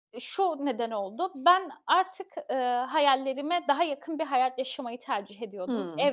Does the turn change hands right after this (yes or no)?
no